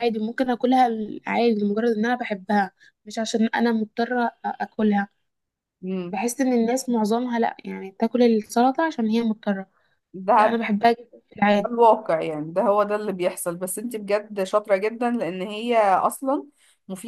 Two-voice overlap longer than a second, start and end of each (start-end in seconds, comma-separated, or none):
none